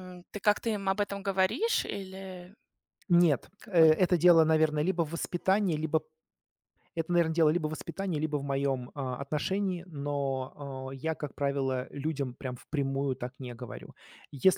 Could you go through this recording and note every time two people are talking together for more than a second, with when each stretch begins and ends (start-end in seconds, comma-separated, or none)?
none